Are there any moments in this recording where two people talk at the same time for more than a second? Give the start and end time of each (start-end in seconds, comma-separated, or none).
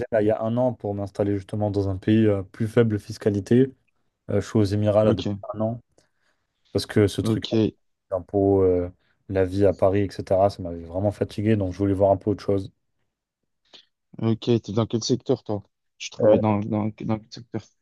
none